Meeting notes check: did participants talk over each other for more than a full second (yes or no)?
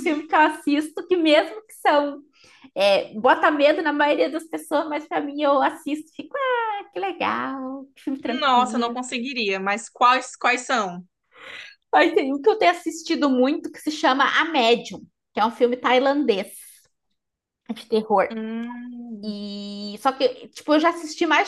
no